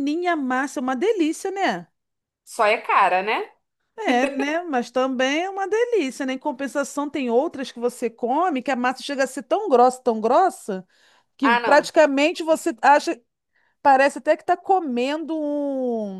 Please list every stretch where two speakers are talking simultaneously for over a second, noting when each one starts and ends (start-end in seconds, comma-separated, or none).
none